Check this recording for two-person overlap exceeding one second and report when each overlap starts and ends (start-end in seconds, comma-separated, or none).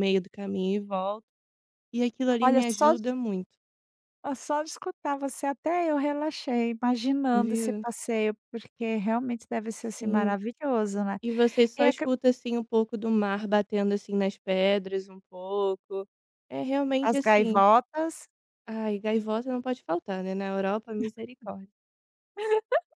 none